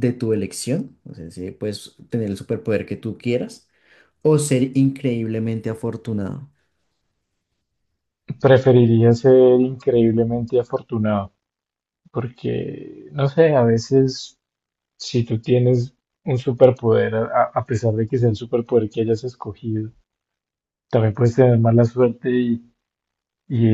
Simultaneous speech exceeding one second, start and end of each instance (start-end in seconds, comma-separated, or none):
none